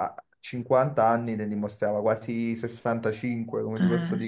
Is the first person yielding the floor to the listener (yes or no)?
no